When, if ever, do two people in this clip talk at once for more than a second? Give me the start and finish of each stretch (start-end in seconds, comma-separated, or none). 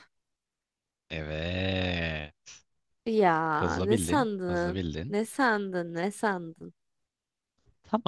3.5-5.2